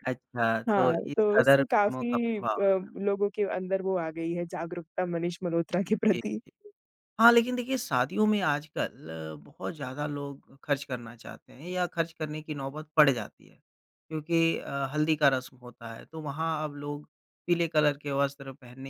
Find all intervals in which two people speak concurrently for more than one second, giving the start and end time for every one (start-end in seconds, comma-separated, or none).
0.7-2.4